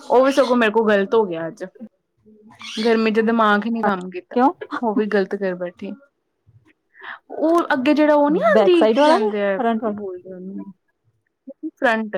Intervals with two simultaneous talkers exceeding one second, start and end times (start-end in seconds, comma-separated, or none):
8.5-10.1